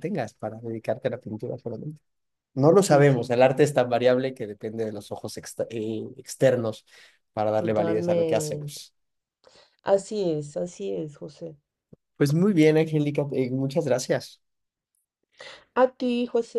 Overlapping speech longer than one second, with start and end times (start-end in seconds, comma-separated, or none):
7.6-8.8